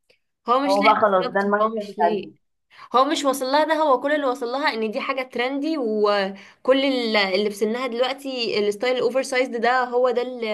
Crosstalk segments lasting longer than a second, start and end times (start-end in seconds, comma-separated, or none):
0.7-2.3